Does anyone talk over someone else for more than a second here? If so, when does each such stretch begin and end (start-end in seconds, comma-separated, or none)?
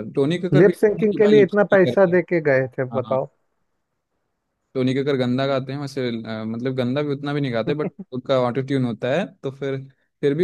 0.5-2.2